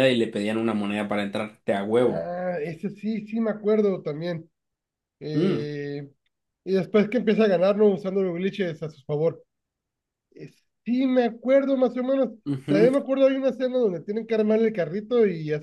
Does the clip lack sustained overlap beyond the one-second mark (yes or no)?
yes